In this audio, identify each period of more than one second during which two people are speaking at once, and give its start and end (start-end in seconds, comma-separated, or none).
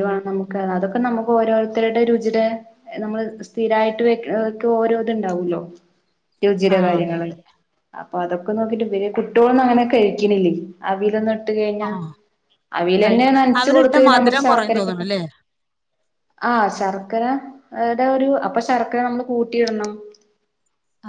13.0-15.1